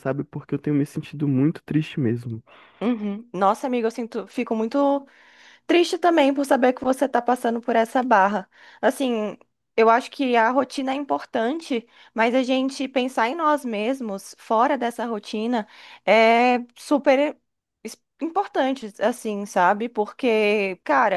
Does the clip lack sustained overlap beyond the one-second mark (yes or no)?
yes